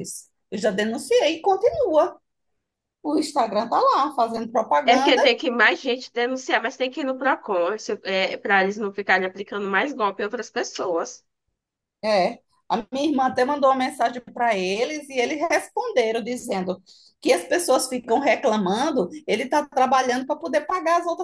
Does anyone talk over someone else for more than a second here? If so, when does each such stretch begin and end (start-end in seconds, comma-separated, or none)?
none